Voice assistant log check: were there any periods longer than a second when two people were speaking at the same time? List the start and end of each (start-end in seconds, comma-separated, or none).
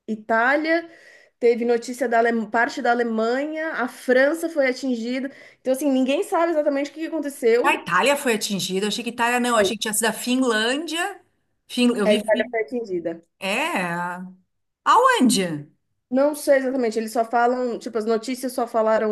none